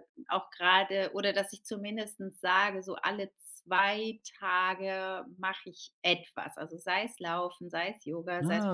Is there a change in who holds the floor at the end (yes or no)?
no